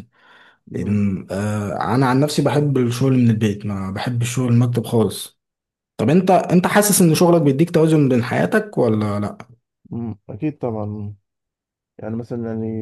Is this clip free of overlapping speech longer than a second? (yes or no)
yes